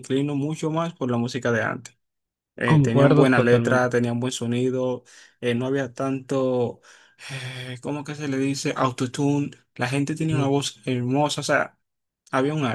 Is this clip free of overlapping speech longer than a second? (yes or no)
no